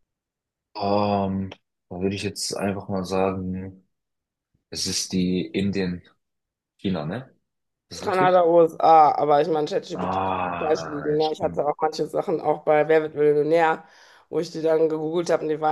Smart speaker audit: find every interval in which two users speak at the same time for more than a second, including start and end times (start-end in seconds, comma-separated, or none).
9.9-11.6